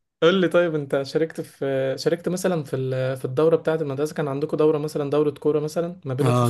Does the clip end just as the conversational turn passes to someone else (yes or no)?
yes